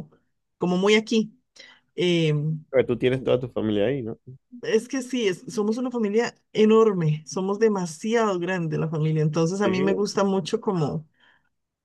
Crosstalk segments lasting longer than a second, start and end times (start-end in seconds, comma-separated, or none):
none